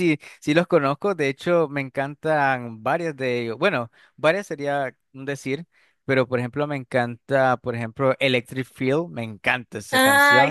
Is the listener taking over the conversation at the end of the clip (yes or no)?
yes